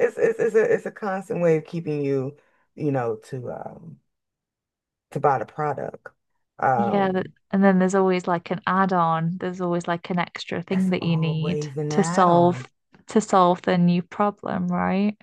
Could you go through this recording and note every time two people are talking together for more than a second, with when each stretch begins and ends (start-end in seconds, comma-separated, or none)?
10.7-12.7